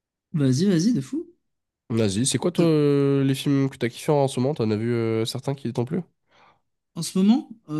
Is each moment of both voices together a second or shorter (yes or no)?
yes